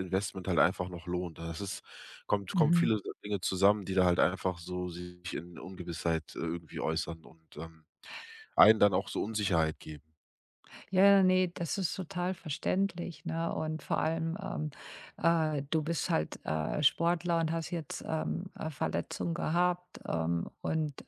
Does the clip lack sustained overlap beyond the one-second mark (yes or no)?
yes